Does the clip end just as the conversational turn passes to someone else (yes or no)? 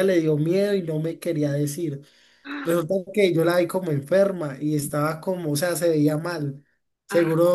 no